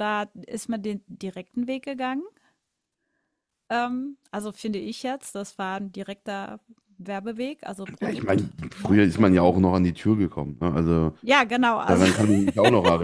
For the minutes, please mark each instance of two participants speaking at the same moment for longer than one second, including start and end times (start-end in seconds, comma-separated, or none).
8.0-9.6